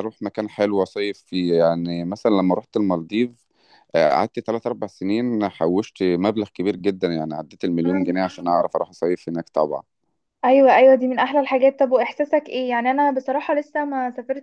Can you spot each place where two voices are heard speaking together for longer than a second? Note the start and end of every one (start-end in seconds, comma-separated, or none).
none